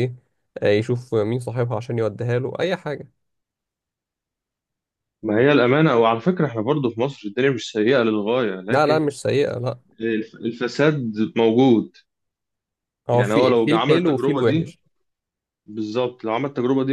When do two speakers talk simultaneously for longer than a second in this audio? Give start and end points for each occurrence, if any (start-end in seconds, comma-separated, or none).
13.1-14.7